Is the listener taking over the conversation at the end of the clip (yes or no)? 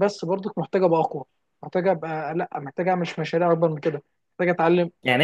yes